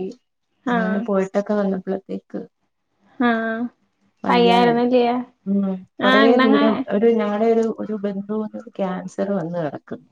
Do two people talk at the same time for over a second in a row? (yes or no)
no